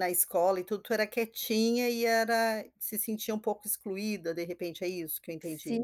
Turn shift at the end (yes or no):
yes